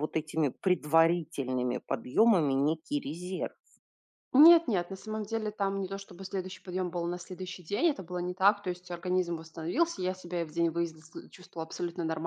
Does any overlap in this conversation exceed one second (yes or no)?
no